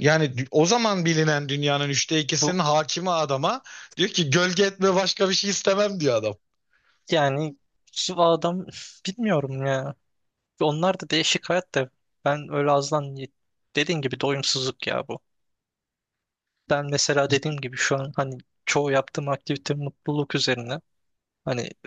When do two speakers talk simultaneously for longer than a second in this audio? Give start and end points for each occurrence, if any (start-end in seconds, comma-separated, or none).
none